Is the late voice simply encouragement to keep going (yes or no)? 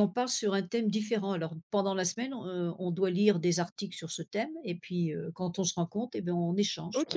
no